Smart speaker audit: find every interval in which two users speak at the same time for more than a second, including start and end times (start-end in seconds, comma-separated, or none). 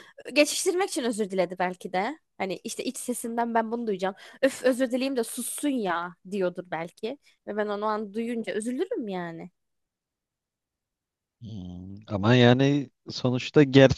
none